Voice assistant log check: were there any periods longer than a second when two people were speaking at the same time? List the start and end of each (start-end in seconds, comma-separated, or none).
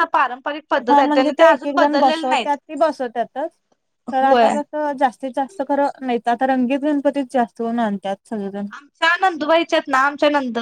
0.9-2.5